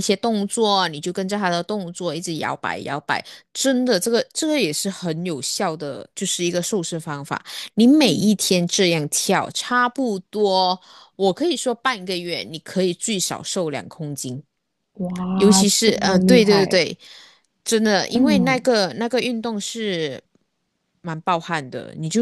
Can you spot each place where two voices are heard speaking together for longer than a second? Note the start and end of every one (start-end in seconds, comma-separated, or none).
15.3-16.9